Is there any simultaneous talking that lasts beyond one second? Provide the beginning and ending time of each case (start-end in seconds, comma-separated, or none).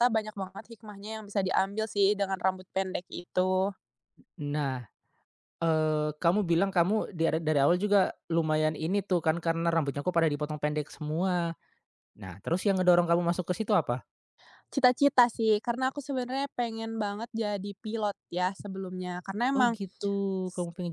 none